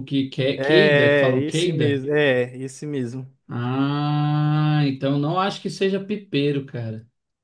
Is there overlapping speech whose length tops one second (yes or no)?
yes